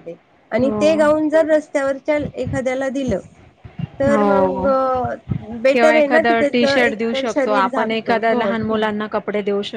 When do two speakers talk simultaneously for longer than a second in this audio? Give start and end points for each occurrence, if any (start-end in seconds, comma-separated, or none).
5.7-8.5